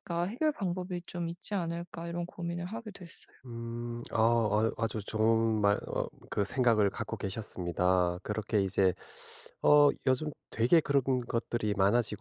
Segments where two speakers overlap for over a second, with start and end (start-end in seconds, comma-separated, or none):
none